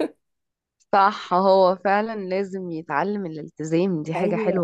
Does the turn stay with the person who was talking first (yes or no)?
no